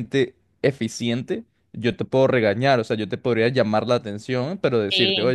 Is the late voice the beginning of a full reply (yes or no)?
no